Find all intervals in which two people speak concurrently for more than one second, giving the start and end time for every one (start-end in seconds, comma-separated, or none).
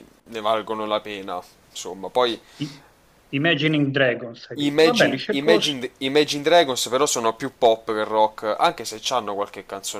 4.5-5.8